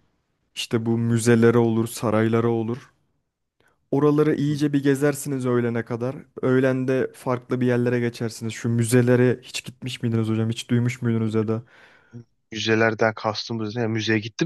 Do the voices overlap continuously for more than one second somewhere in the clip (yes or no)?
no